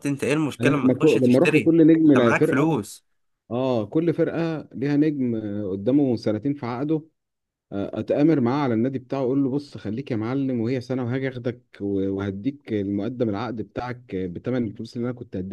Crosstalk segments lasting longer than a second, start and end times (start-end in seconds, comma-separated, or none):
0.6-2.9